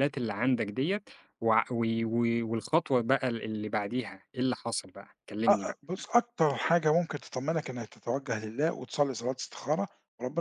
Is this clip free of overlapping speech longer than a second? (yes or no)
yes